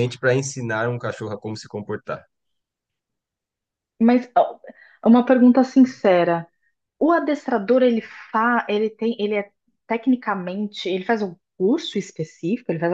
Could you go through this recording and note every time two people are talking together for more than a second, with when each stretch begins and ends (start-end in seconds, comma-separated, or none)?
none